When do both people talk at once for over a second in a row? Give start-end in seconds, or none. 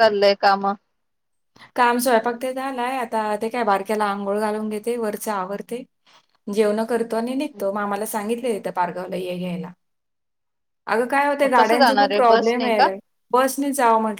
11.4-12.9